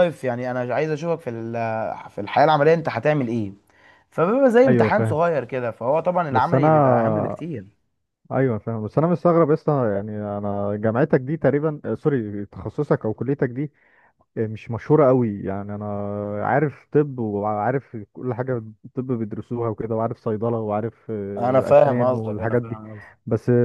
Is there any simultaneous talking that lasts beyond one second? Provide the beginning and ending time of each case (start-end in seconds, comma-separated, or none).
21.4-22.8